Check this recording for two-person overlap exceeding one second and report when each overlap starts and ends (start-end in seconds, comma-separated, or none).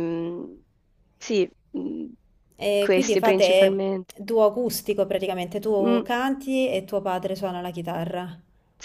2.8-4.1